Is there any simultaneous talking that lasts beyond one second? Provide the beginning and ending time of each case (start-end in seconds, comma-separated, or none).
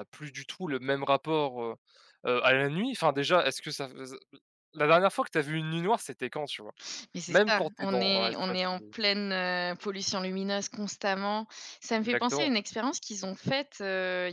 7.3-8.8